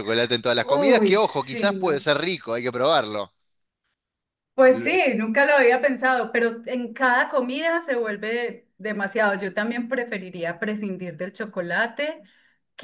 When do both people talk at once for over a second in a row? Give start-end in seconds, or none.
0.6-2.1